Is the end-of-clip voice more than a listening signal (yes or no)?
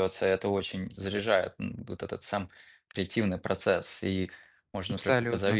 no